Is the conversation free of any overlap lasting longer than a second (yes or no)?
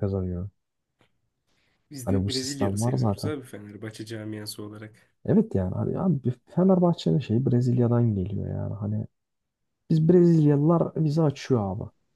no